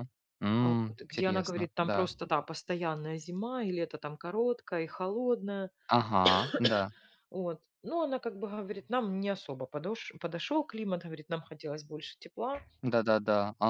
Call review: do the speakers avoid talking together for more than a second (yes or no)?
no